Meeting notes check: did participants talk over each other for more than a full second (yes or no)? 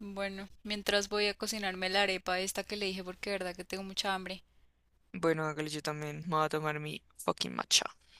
no